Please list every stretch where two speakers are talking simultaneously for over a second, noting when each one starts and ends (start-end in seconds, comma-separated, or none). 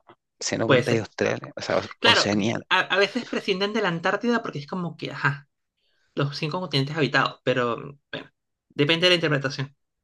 none